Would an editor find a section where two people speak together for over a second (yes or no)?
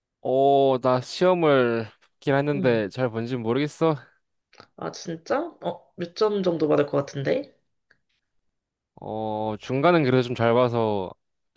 no